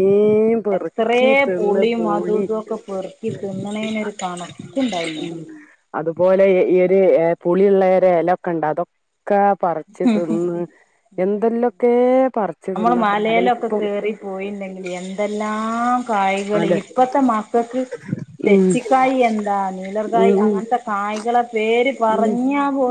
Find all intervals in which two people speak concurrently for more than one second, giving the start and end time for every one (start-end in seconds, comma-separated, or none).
0.8-2.4